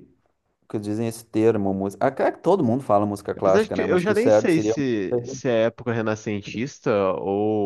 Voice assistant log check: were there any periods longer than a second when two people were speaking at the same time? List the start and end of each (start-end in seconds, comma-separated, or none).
3.4-4.7